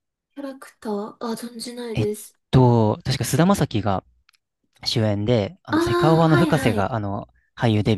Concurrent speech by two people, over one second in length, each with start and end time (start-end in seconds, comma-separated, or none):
5.7-7.0